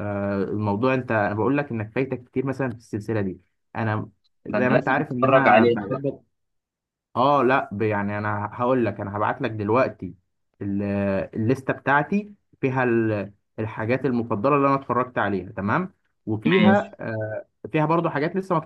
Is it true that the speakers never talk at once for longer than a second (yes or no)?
no